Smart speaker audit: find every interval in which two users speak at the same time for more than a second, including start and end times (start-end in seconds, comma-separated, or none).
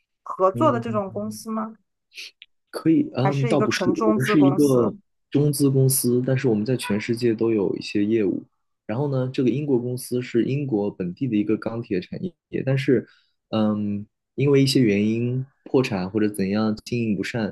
3.2-4.9